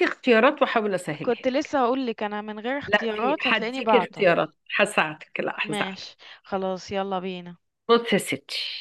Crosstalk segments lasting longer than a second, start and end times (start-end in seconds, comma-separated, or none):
2.9-4.3